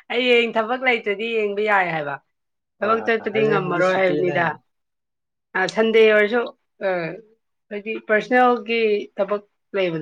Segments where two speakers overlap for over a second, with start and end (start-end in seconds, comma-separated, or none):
2.8-4.4